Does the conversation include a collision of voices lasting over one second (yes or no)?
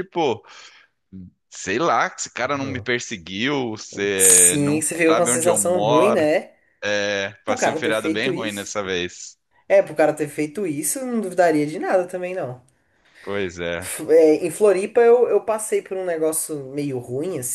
yes